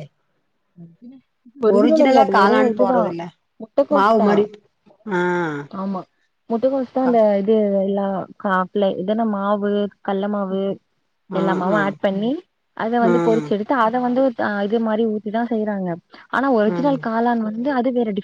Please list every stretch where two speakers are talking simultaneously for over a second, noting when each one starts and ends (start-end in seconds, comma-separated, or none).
1.8-3.1